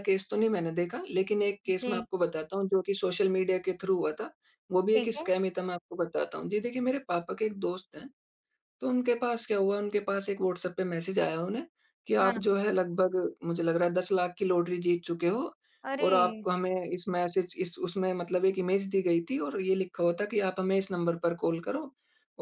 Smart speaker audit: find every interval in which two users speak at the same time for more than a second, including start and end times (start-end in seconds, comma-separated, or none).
none